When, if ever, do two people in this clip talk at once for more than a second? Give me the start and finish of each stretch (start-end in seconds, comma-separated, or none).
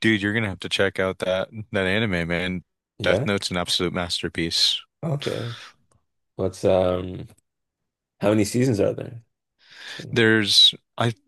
none